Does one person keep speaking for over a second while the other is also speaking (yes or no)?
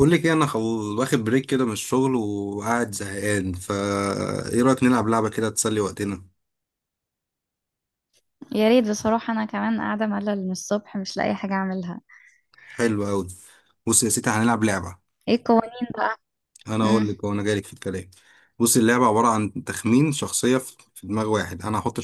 no